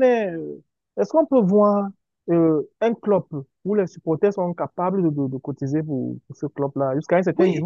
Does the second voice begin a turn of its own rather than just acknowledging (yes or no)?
yes